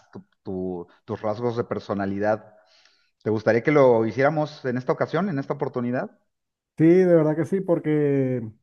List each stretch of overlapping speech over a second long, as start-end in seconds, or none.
none